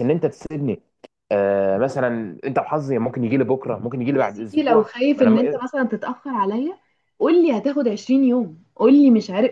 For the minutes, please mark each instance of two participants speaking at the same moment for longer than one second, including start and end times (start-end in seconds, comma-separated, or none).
4.2-5.6